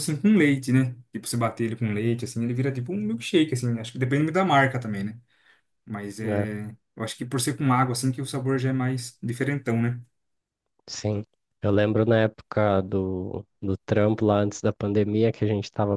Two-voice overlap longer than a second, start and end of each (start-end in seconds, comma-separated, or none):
none